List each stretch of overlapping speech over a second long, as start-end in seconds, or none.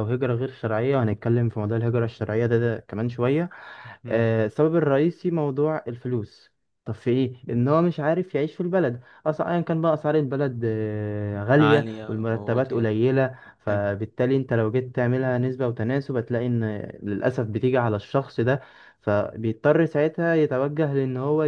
11.6-12.9